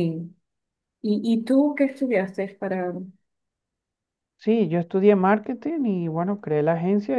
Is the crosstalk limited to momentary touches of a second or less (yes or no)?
yes